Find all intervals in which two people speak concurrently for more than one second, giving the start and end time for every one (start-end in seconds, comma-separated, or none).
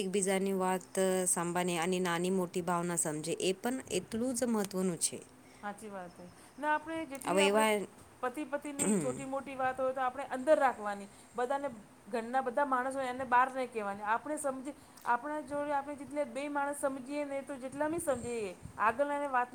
none